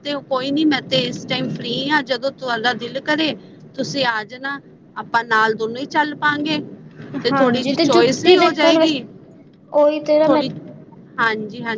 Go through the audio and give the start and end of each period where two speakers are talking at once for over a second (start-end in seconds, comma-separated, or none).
7.3-8.9